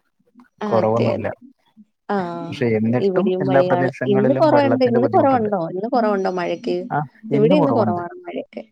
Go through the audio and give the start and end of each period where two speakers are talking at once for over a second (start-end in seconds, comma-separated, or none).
3.7-5.5